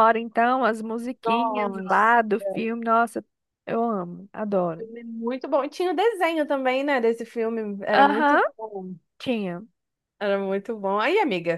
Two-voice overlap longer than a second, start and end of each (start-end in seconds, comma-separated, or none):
1.2-2.6